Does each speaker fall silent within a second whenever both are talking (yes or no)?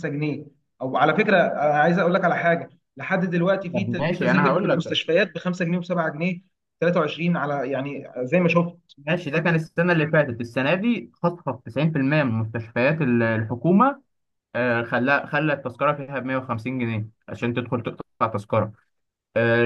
no